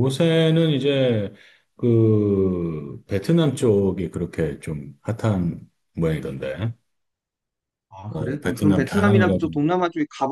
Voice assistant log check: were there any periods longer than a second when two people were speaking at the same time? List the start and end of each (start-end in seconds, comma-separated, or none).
8.1-9.6